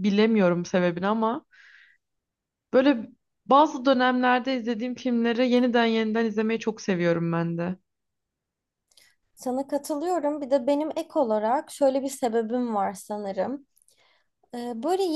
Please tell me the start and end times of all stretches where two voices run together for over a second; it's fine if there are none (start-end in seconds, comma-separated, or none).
none